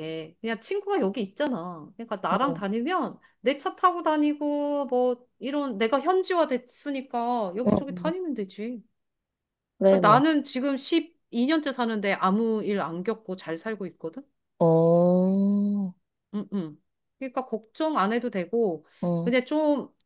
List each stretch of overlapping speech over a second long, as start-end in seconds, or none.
none